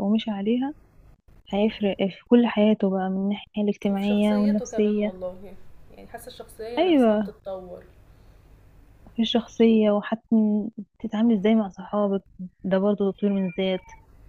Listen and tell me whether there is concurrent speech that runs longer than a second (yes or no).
yes